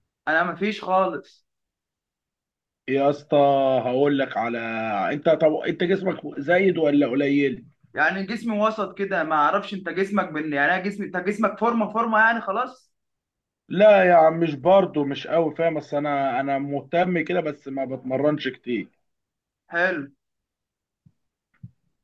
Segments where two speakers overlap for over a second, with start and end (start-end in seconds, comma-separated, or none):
none